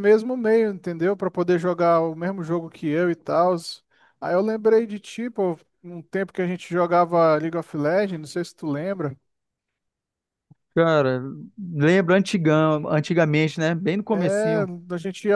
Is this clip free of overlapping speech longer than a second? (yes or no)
yes